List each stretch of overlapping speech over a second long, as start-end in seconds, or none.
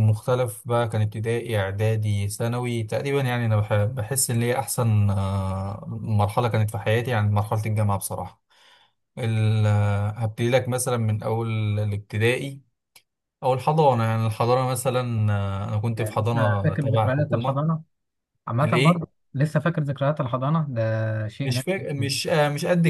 15.9-17.6